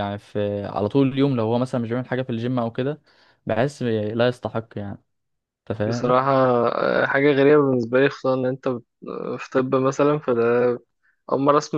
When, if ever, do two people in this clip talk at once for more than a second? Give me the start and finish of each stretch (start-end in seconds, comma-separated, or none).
none